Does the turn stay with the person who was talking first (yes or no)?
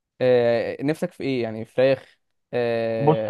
no